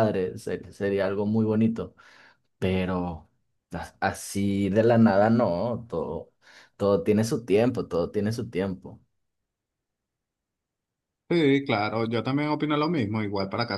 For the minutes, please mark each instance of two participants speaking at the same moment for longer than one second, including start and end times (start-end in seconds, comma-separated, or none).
none